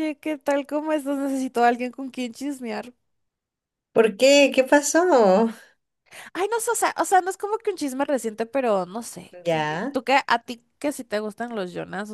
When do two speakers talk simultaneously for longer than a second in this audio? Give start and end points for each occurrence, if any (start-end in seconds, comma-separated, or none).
none